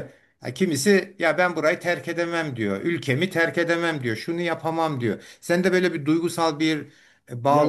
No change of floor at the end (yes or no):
no